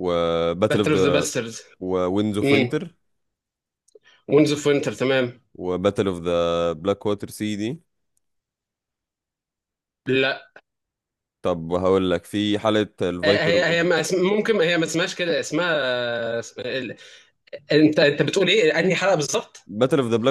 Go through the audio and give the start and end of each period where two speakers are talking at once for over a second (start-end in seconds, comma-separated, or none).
none